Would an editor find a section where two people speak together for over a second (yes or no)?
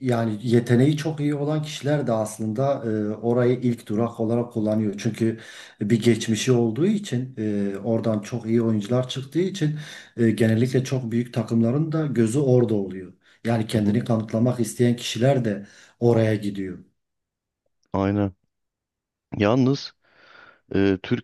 no